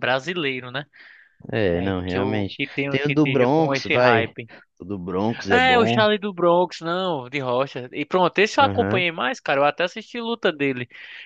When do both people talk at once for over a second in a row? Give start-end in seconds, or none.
1.7-4.3